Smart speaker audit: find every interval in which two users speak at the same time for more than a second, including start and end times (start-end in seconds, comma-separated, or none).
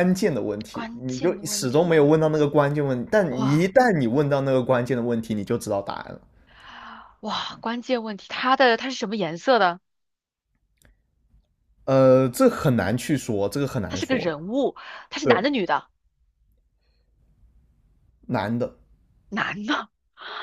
0.7-1.9